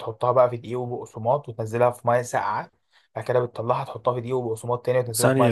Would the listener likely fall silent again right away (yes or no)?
no